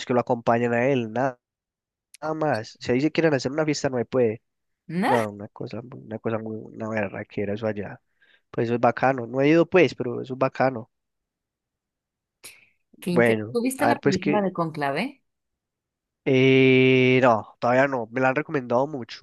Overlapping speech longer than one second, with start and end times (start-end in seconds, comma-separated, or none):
13.0-14.5